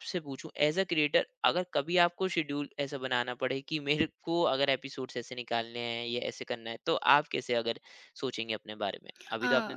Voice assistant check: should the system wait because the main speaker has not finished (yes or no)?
no